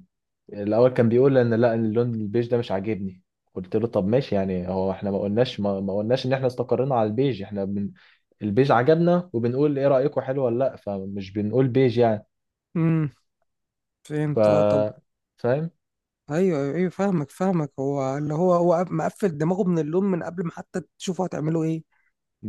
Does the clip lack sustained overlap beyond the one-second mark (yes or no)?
yes